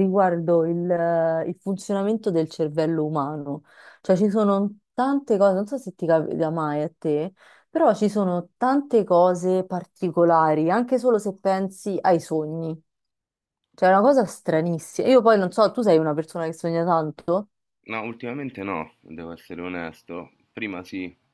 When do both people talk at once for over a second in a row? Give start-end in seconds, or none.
none